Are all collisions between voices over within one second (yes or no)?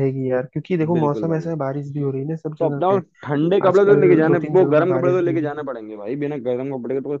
no